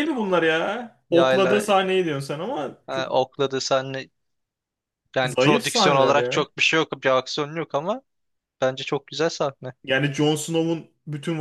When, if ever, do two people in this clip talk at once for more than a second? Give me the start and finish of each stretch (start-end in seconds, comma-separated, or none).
5.2-6.5